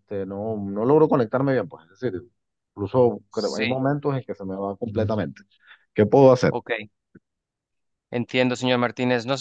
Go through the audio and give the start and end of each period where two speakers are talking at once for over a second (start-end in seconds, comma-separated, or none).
none